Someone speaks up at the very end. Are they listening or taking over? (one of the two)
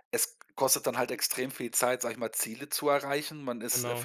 listening